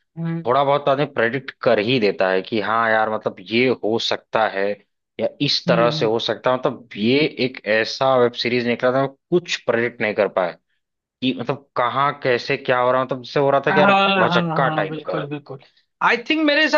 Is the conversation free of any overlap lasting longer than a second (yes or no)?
no